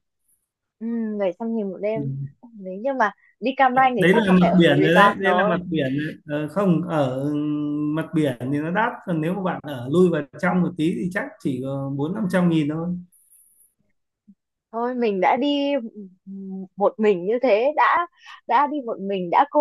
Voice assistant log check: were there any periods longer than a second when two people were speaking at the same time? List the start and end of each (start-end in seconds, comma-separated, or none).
4.0-5.5